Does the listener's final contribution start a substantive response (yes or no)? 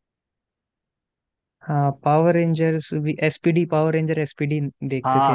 yes